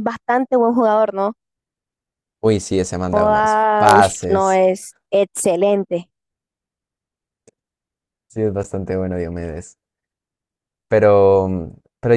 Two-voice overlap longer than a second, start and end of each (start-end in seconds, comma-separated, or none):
3.1-4.6